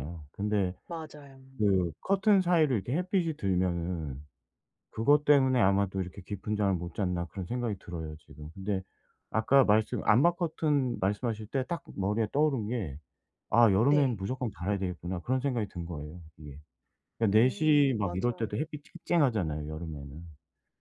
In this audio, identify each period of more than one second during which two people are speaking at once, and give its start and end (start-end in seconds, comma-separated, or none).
17.3-18.6